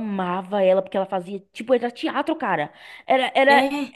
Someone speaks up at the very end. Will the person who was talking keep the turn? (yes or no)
yes